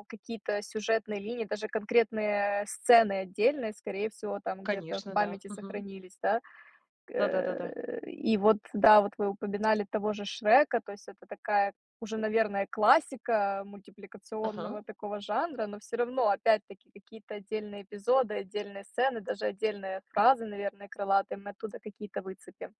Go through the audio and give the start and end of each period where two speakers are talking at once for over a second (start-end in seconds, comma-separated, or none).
4.6-5.8